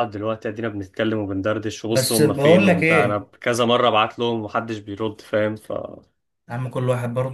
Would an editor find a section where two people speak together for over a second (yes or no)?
yes